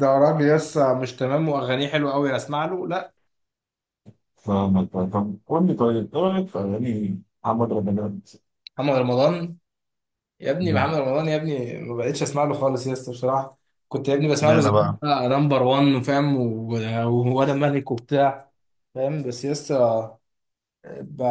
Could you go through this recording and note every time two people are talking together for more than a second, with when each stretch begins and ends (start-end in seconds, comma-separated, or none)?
none